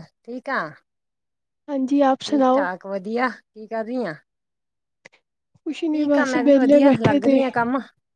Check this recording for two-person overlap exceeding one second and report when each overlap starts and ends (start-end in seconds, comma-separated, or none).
5.9-7.4